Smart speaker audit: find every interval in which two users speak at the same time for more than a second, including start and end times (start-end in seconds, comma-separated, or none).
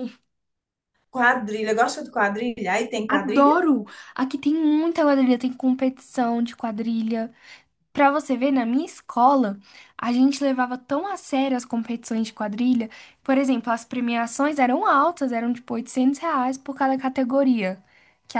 none